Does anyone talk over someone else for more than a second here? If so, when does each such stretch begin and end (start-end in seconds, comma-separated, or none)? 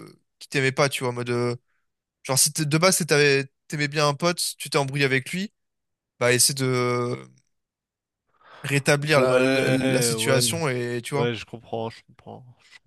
9.2-10.4